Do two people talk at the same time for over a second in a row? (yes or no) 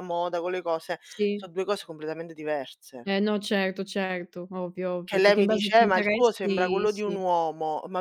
yes